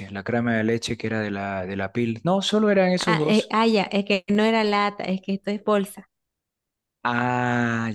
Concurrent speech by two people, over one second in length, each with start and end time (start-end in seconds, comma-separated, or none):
none